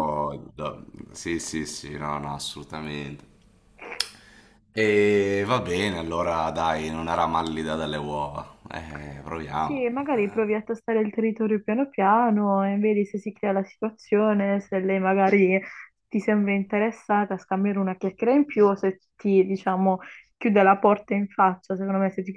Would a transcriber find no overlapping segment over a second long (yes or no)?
yes